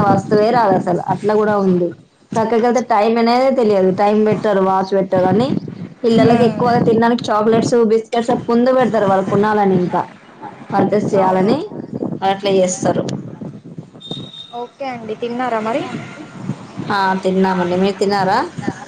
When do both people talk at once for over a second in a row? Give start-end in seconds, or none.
none